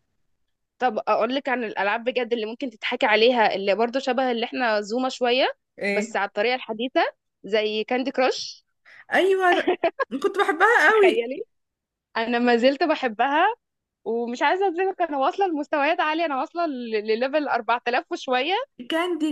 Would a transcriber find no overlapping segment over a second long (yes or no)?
yes